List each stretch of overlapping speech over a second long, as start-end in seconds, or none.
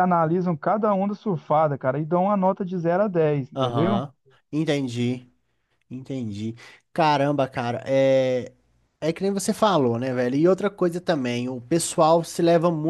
none